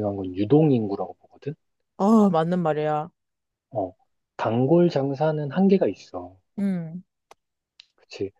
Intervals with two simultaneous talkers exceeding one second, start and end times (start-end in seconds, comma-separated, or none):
none